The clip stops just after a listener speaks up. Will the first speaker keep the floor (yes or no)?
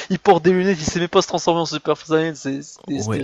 no